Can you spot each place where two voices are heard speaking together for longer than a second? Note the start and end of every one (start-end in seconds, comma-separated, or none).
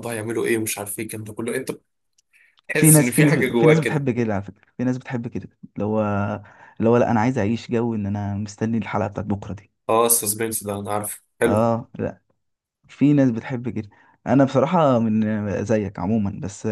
2.7-4.1